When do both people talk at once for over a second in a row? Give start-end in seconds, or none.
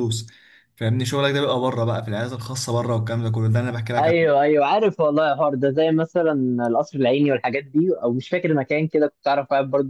none